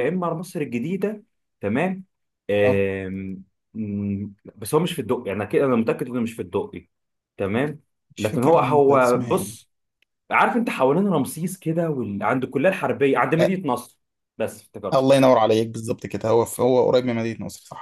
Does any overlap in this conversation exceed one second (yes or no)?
yes